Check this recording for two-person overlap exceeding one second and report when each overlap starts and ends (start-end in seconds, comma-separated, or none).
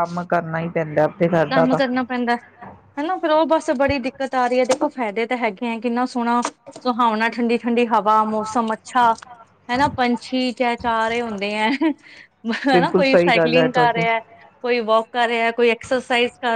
12.7-14.1